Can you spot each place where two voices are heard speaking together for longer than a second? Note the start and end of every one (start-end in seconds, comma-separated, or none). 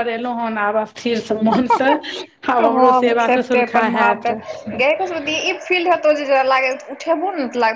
2.6-4.2